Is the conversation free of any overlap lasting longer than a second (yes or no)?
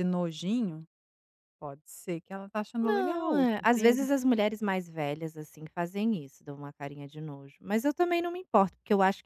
no